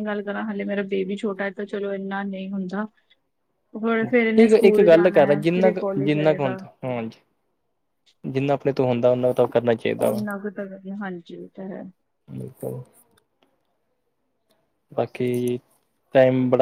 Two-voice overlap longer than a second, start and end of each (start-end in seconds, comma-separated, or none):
4.4-6.6